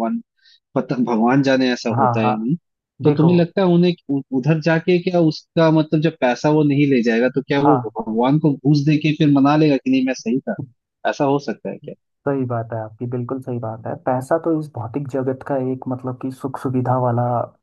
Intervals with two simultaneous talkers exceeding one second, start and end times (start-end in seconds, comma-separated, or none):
none